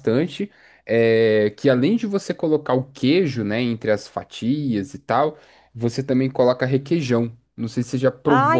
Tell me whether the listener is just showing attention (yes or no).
no